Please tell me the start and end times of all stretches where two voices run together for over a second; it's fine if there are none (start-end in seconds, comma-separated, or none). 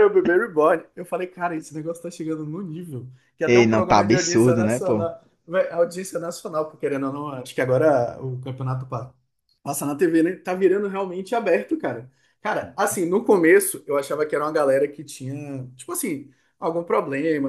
3.4-5.1